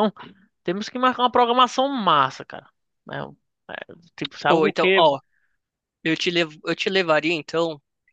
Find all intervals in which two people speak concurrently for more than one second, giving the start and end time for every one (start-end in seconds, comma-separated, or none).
none